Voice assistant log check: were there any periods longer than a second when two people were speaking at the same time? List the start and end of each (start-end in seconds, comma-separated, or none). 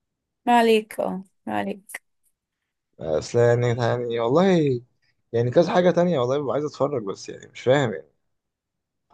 none